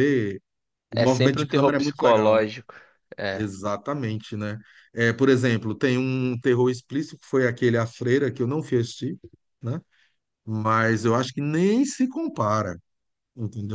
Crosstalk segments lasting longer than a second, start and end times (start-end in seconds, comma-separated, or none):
0.9-2.4